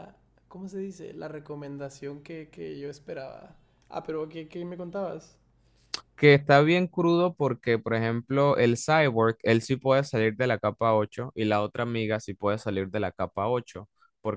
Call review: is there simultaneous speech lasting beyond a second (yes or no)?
no